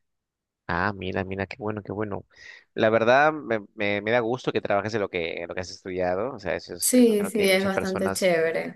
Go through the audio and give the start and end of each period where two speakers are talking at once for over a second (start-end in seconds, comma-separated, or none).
6.8-8.3